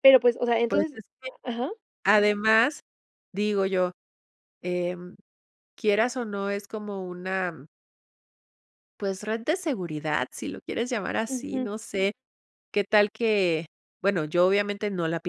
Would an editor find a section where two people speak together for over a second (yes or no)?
no